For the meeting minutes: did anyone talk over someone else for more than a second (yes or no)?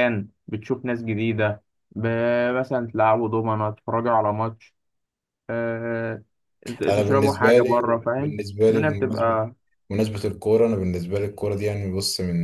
yes